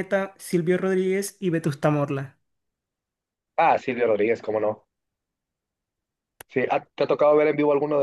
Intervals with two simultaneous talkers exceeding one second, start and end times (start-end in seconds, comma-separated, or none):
none